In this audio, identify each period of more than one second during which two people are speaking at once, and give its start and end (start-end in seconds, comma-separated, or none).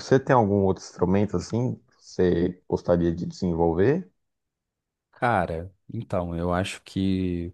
none